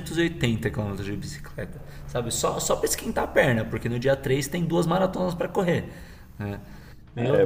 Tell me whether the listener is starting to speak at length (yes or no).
yes